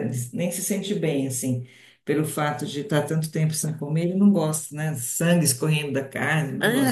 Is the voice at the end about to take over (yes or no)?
yes